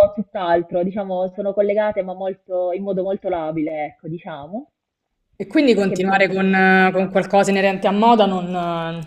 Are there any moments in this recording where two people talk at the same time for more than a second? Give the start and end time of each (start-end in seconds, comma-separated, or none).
5.7-7.1